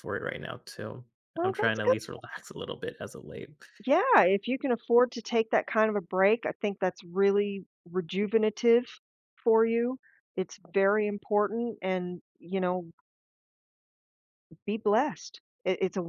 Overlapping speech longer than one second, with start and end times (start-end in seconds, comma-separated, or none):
none